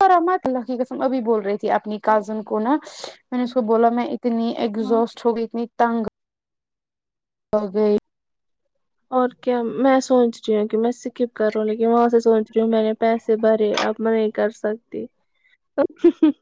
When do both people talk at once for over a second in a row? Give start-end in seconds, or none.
none